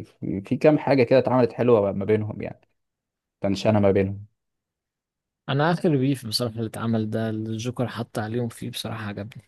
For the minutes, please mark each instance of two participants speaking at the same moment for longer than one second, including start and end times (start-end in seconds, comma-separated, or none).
none